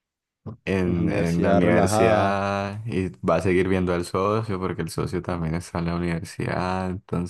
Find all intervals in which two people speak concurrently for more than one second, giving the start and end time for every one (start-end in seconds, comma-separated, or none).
0.8-2.4